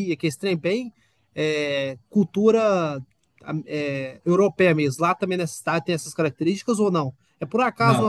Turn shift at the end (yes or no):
no